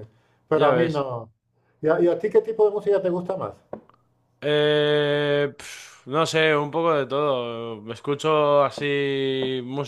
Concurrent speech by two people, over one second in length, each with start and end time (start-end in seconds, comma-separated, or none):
none